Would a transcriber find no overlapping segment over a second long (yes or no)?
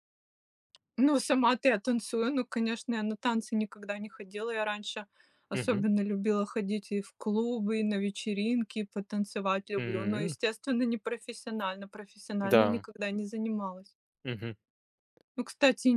yes